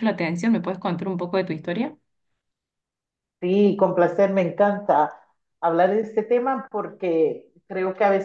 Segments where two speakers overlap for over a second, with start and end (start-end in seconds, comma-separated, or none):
none